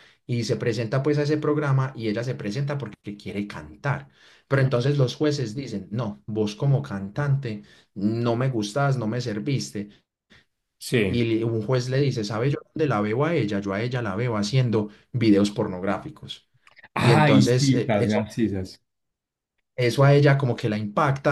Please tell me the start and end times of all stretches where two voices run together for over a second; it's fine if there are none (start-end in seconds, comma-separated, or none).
17.0-18.3